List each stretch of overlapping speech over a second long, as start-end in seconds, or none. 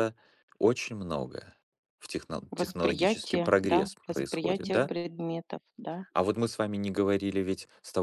2.5-4.9